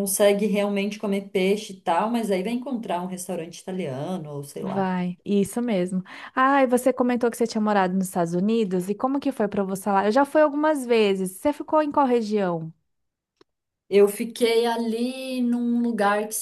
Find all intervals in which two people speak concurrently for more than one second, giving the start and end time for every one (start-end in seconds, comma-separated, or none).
none